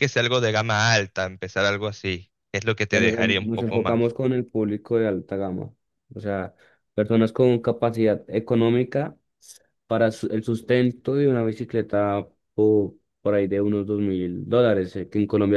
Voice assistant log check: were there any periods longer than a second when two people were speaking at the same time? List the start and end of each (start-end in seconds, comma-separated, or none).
2.9-4.2